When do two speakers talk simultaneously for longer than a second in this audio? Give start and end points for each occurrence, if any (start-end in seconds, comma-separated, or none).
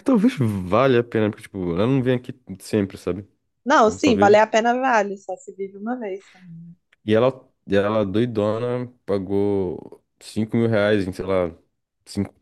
none